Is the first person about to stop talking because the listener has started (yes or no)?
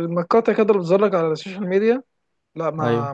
no